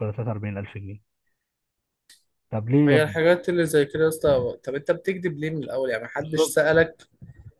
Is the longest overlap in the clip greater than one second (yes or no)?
no